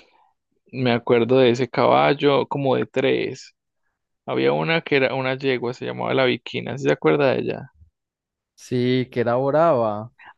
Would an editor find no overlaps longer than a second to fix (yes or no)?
yes